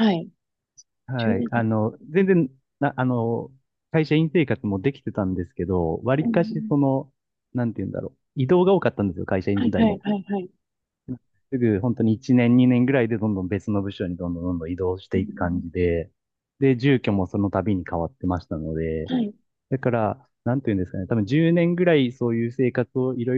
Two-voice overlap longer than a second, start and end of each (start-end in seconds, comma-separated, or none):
none